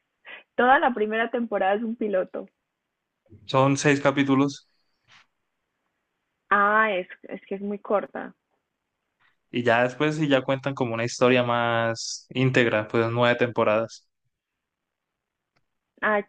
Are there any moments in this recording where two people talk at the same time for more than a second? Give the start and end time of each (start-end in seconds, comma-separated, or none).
none